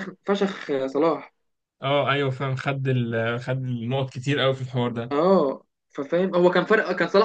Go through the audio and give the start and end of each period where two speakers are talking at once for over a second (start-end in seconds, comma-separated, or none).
none